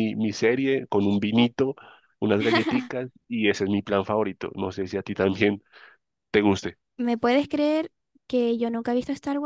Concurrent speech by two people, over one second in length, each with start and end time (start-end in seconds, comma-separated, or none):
none